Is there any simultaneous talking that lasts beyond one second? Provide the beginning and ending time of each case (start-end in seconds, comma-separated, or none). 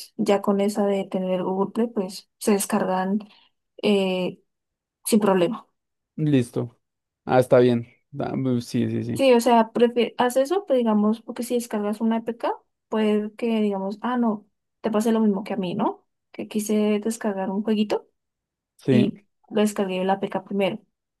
none